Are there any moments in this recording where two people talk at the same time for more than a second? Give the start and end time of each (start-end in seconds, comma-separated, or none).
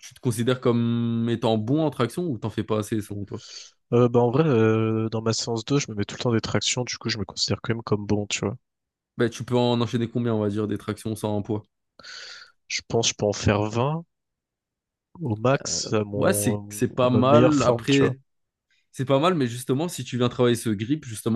16.2-18.2